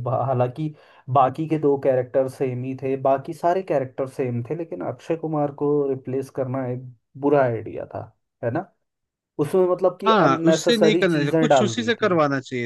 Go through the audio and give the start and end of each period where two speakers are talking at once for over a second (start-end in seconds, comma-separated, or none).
10.1-12.1